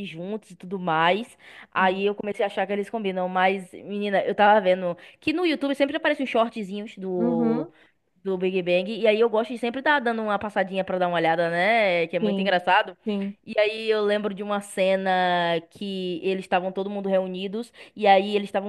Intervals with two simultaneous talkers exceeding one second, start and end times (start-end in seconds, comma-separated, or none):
none